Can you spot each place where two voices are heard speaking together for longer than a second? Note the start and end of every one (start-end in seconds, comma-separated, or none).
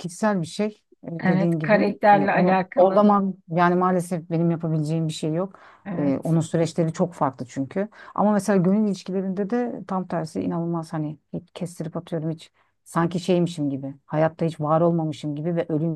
1.2-3.1